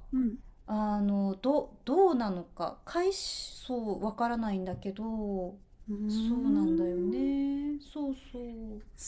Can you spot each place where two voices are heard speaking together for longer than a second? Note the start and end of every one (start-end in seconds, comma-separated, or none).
6.1-7.3